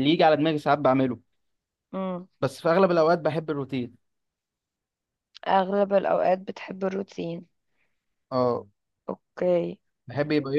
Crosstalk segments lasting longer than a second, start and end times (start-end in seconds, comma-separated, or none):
none